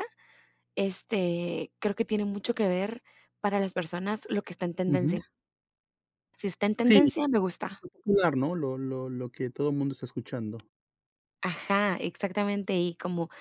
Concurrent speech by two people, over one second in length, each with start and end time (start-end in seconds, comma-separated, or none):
none